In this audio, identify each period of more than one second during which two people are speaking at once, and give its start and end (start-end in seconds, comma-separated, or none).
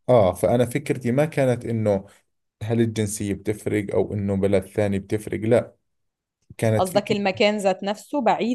none